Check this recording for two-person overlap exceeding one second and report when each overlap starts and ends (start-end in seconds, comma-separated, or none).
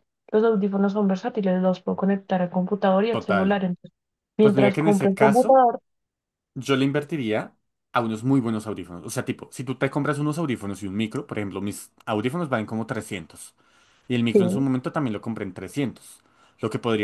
4.4-5.7